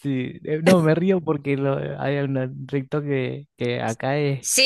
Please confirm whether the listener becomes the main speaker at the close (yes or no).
yes